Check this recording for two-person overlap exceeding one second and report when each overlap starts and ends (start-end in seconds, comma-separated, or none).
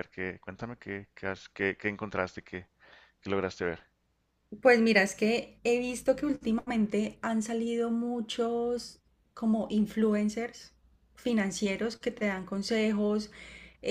none